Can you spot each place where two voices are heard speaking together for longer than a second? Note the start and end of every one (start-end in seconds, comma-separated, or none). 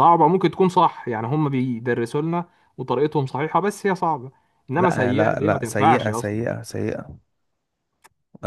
4.8-6.6